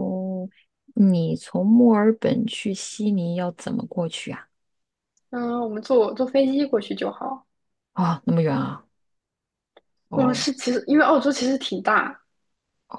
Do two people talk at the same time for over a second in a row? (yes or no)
no